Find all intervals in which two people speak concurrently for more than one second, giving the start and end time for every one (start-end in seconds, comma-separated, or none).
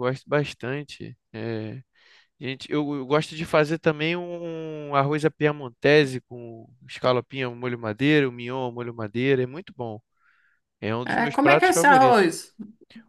11.0-12.3